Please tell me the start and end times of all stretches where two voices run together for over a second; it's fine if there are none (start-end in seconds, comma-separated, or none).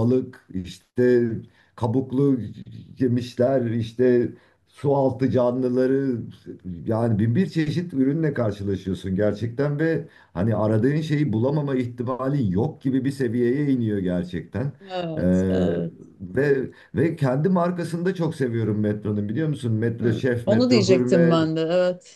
20.0-21.4